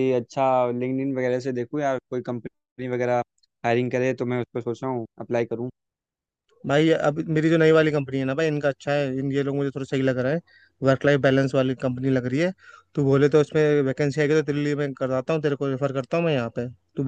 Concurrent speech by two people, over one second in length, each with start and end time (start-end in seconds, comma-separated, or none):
none